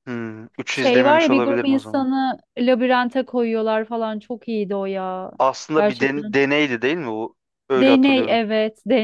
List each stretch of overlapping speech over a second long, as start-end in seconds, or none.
0.7-2.1